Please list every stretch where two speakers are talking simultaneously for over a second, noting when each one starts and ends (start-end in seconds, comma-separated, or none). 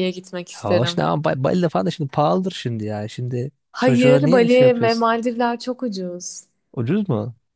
3.7-5.1